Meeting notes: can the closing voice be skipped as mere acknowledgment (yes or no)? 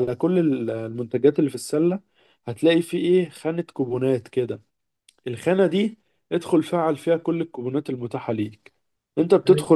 yes